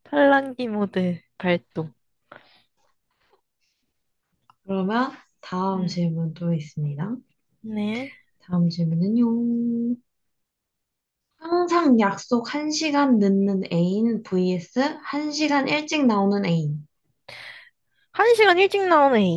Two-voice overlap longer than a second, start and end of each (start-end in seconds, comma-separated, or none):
none